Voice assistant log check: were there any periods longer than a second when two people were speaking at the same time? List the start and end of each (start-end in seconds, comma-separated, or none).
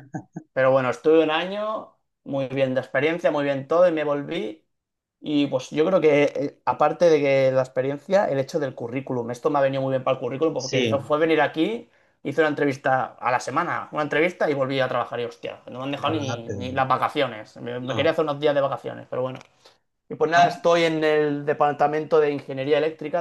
none